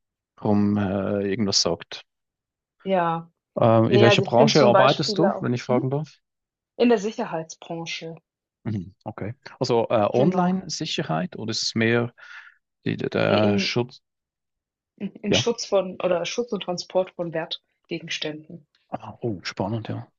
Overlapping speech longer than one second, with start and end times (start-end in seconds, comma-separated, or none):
3.9-5.9